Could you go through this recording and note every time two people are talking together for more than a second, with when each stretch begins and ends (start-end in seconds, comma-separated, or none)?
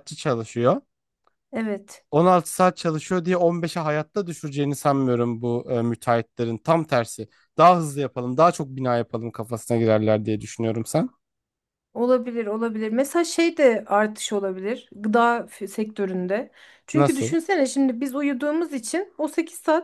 none